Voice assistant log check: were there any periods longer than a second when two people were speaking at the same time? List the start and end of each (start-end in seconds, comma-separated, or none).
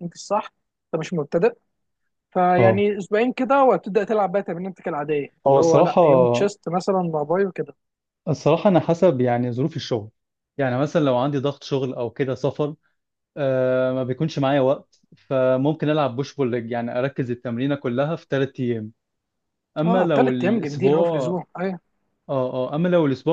19.8-21.3